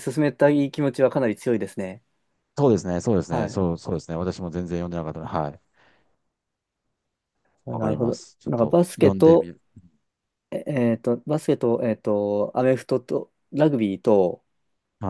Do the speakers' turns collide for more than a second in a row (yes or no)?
yes